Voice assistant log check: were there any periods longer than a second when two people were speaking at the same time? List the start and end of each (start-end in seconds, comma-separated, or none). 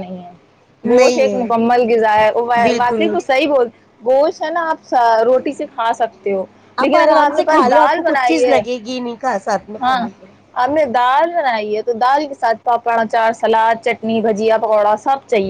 7.0-8.6